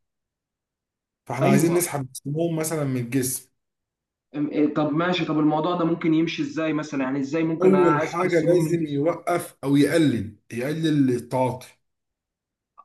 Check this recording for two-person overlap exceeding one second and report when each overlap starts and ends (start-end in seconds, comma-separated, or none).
7.6-9.0